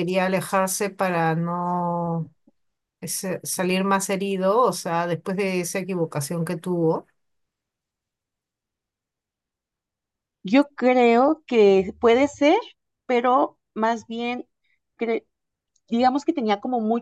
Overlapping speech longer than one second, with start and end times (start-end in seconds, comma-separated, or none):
none